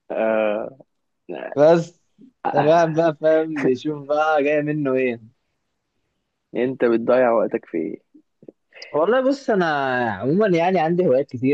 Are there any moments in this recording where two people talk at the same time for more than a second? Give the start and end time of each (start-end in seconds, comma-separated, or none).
none